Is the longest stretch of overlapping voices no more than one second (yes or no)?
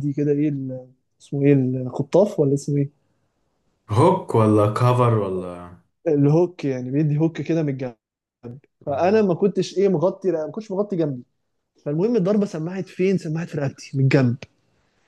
yes